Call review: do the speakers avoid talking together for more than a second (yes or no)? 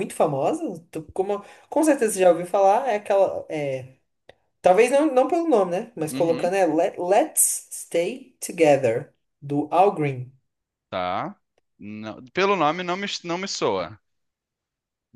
yes